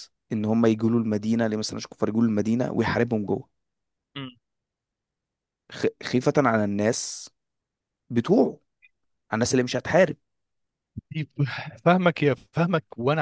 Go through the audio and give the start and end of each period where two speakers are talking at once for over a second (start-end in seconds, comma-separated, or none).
none